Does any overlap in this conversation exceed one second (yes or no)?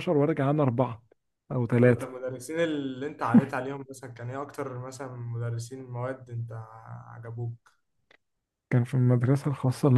no